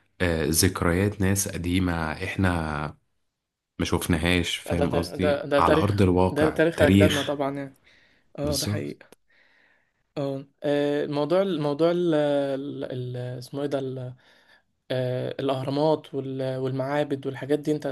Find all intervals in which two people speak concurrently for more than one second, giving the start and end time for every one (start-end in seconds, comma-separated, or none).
4.7-7.4